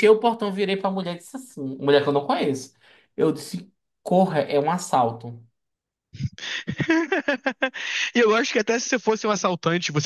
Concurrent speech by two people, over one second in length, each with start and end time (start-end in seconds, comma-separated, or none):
none